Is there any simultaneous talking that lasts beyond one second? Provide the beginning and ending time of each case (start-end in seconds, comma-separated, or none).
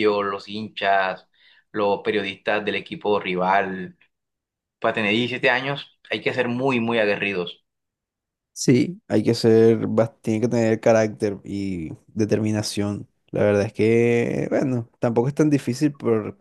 none